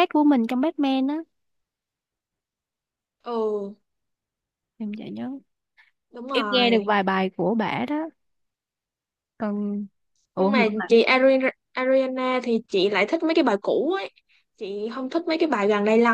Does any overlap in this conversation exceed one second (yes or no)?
no